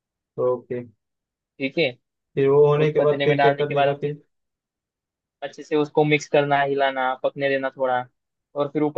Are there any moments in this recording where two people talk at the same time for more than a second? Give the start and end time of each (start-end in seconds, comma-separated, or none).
2.8-4.1